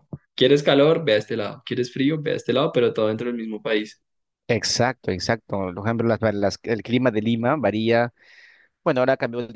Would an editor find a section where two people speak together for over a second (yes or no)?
no